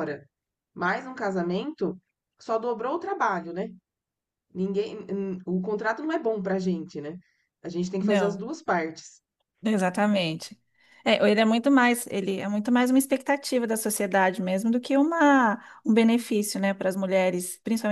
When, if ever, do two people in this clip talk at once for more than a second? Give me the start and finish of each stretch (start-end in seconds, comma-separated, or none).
none